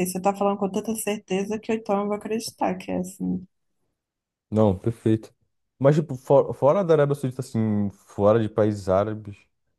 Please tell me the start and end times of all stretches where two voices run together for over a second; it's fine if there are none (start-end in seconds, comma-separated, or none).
none